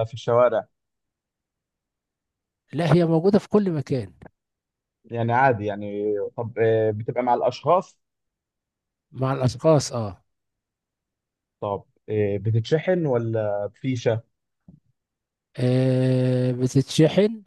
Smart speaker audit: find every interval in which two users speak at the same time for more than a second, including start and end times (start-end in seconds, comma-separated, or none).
none